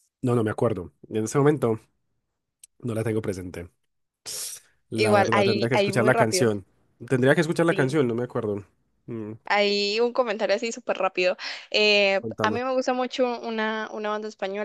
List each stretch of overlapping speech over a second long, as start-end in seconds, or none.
4.9-6.5